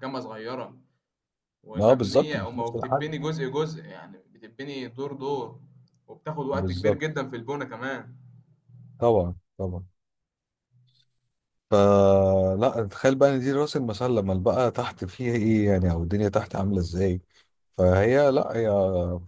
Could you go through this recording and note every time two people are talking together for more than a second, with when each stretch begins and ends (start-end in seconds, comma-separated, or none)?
1.8-3.1